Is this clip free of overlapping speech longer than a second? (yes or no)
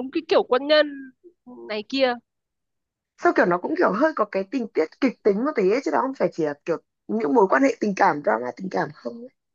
yes